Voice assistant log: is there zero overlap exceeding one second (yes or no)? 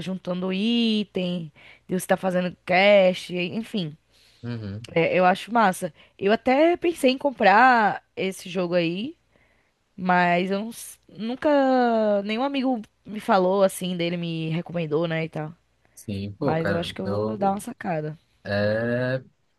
no